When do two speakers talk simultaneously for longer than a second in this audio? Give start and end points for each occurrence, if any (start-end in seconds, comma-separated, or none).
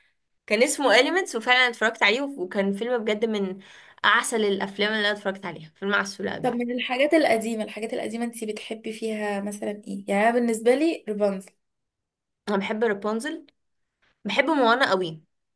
none